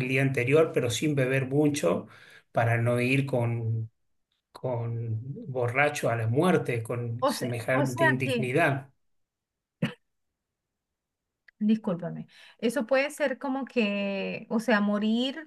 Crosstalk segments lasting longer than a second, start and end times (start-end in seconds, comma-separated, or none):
7.2-8.5